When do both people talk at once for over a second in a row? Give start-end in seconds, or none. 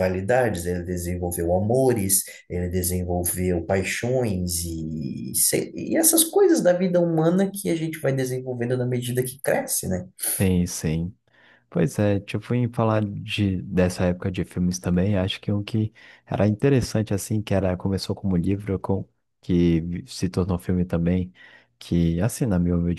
none